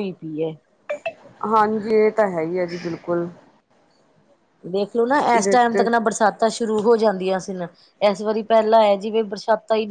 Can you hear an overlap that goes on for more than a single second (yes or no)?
no